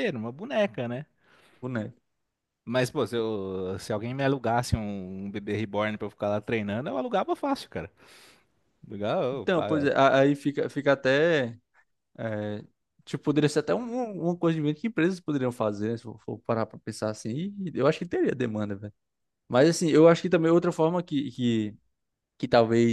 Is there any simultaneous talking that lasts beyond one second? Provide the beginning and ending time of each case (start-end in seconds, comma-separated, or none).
none